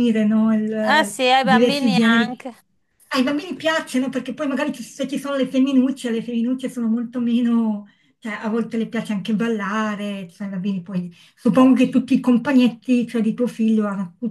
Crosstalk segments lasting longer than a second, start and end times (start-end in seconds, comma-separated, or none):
0.8-2.4